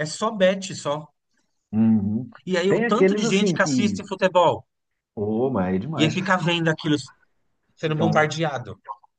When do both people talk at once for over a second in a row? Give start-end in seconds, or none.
2.7-4.0